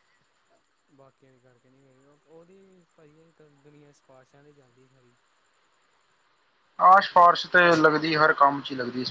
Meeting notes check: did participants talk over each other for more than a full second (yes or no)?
no